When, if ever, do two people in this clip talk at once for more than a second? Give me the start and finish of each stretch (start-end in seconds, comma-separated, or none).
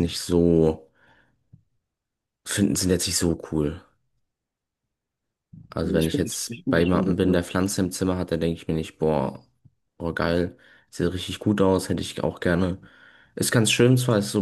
5.8-7.4